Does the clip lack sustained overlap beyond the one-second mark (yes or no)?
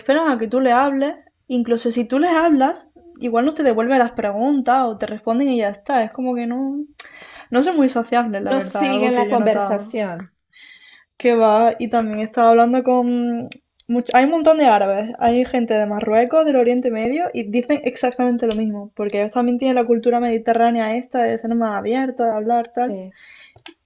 no